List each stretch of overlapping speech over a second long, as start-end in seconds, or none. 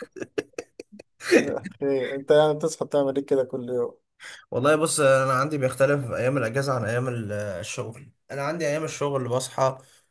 none